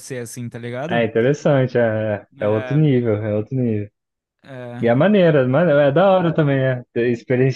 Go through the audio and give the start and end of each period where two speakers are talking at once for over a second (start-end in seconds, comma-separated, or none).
none